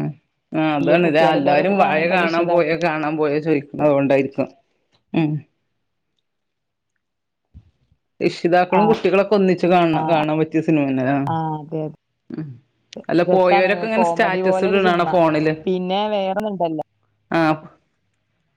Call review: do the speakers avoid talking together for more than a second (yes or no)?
no